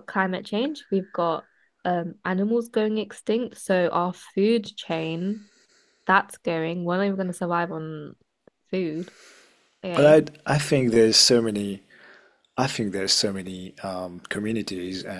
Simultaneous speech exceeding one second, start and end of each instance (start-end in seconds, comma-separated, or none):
none